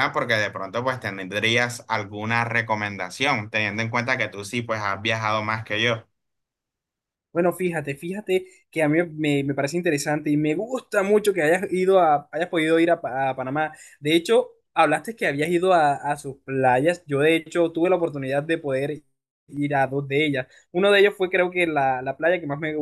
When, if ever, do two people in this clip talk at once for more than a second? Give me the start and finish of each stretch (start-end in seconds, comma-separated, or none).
none